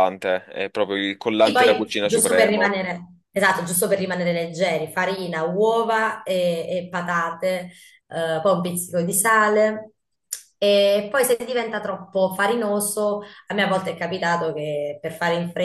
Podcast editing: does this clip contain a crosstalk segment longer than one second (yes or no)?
yes